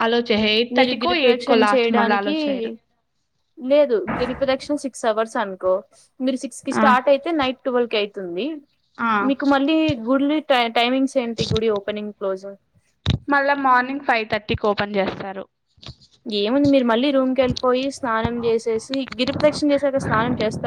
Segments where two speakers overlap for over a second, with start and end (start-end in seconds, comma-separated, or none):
0.8-2.3